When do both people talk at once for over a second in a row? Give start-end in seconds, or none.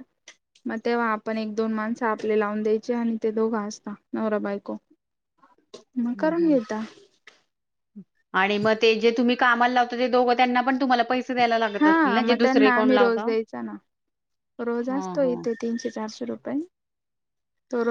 11.8-13.3